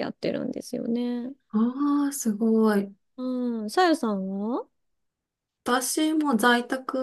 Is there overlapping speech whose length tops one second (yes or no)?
no